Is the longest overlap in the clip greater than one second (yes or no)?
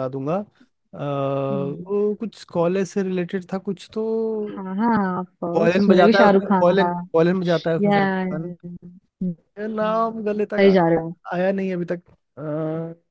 yes